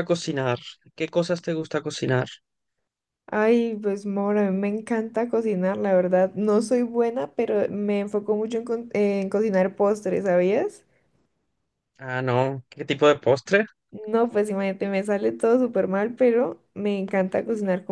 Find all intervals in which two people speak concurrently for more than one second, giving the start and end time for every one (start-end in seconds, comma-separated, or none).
none